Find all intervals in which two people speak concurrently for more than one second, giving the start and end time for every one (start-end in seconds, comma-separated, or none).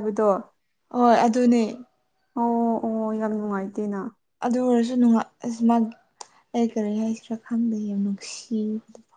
none